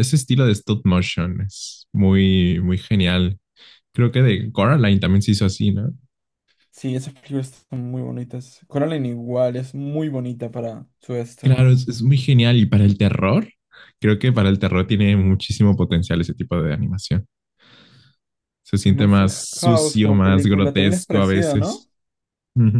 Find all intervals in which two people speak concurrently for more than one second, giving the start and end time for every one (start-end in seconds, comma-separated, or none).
18.8-21.9